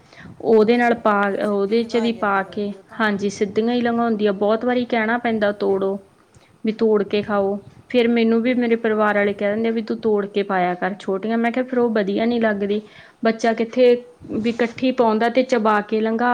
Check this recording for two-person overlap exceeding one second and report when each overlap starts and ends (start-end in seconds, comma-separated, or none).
0.7-3.0